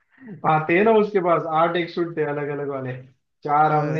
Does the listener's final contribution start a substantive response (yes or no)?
no